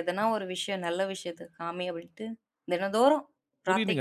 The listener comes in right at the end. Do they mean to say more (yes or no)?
yes